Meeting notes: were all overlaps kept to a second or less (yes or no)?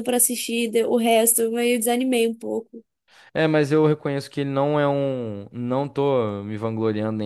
yes